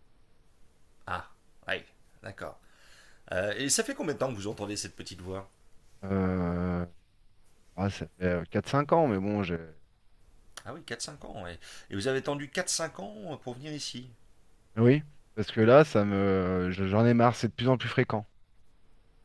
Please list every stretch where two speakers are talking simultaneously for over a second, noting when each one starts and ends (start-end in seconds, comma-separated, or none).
none